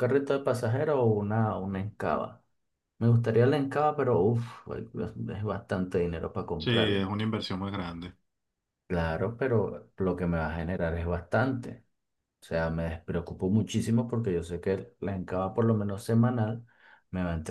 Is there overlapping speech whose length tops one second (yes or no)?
no